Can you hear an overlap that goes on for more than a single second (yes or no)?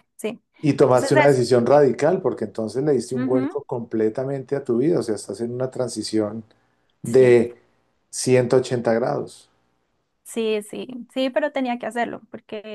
no